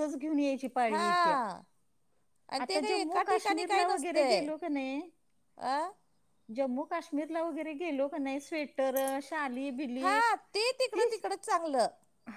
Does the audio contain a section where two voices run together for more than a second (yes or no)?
yes